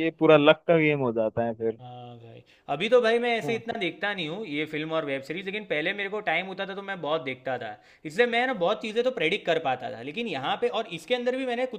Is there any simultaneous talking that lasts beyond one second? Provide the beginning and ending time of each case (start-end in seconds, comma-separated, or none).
none